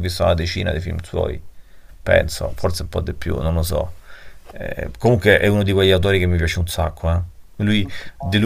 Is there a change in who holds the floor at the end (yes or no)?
no